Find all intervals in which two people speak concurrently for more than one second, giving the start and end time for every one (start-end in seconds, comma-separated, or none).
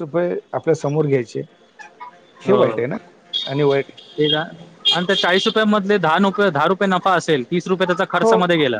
none